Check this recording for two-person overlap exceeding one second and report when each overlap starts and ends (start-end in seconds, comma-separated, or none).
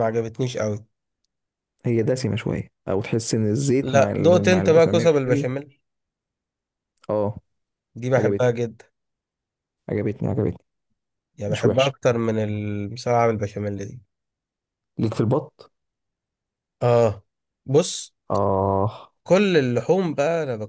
3.8-5.1